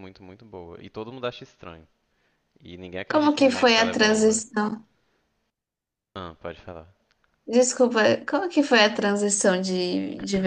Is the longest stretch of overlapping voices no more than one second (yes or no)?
no